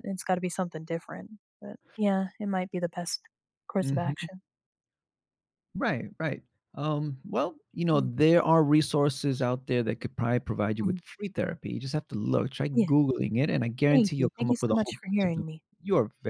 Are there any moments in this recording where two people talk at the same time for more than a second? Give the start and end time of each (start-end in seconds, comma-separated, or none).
13.9-15.4